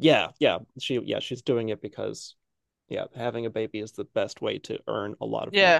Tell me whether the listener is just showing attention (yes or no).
no